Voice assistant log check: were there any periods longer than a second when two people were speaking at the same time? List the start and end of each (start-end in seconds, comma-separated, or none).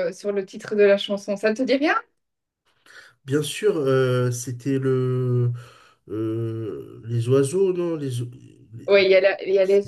none